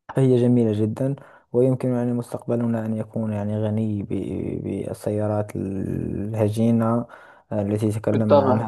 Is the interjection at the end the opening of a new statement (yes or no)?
no